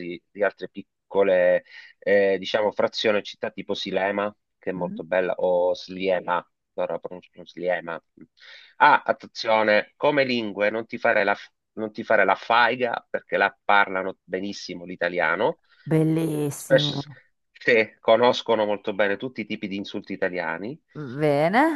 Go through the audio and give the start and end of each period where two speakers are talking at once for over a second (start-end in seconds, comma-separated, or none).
none